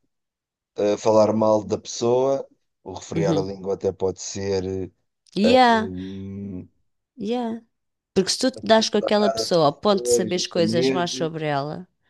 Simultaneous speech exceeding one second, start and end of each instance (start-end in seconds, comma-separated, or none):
9.9-11.3